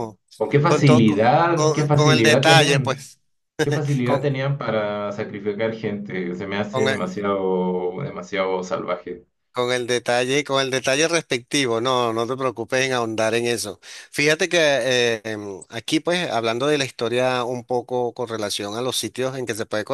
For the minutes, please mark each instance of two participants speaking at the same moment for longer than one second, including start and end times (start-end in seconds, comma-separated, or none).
0.6-3.1